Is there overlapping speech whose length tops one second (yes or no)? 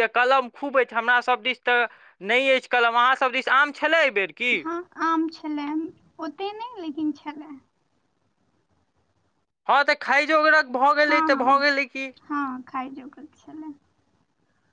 no